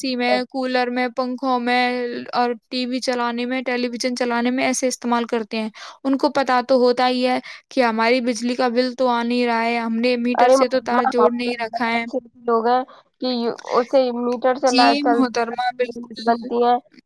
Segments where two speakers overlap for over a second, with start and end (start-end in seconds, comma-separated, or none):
14.7-16.4